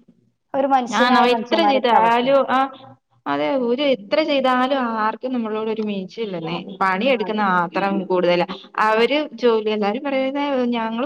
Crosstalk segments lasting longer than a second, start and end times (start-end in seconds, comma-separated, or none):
0.9-2.2